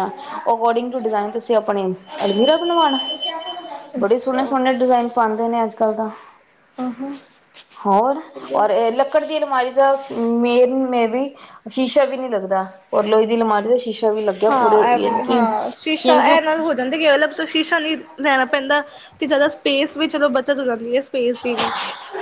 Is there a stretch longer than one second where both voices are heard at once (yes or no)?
yes